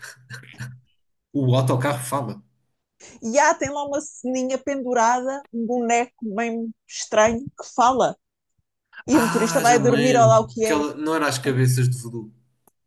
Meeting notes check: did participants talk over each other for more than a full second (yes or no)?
yes